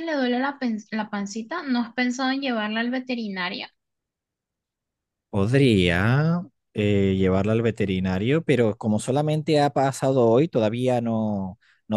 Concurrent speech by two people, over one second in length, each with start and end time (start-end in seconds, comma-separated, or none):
none